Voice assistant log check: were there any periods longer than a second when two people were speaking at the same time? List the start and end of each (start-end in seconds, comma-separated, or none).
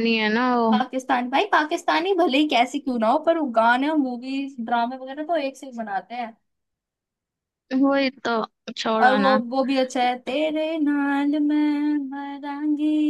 none